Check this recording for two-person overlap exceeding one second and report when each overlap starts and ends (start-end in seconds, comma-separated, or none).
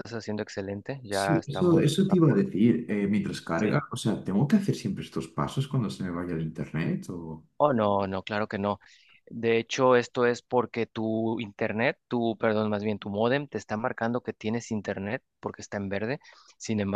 1.1-2.5